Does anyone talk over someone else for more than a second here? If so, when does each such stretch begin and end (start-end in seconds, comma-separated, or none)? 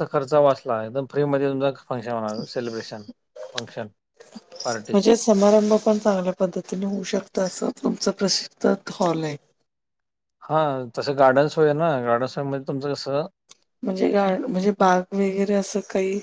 none